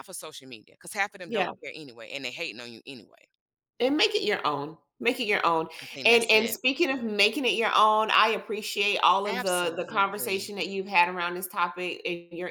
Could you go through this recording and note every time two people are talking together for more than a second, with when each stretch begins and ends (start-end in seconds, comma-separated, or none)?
9.3-10.5